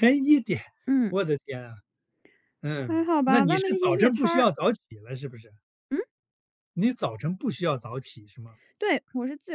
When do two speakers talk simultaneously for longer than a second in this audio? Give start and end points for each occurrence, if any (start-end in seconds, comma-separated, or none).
2.9-4.5